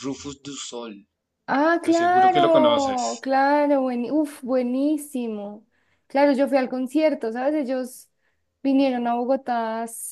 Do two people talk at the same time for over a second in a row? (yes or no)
yes